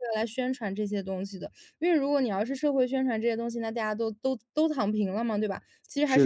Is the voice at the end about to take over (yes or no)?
no